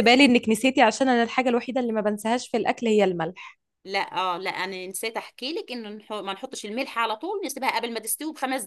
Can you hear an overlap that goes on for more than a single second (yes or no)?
no